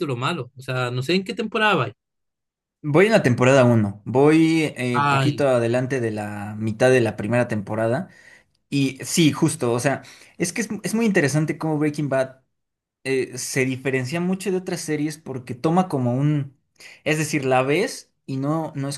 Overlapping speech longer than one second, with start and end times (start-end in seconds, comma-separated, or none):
none